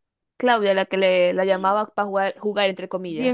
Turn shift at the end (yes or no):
yes